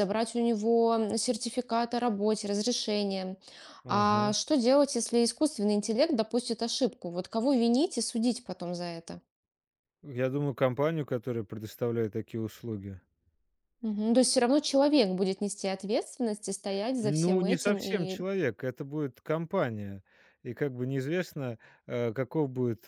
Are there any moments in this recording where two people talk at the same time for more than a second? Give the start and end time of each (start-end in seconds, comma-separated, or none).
17.0-18.2